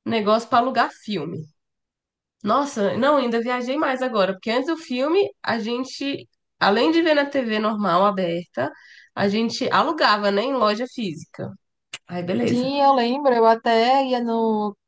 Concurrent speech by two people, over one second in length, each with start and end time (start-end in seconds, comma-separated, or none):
none